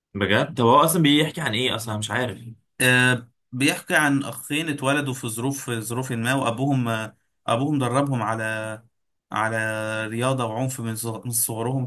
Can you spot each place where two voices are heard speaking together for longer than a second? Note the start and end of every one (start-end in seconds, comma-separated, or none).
none